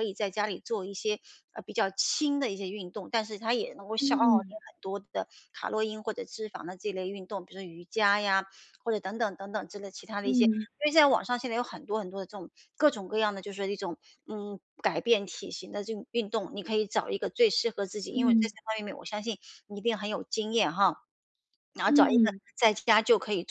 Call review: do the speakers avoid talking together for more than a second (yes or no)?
yes